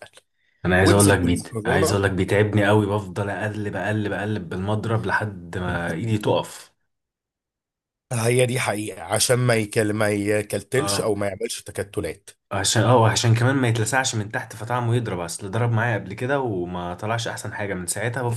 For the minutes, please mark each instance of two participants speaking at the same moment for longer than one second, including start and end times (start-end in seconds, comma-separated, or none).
0.8-2.0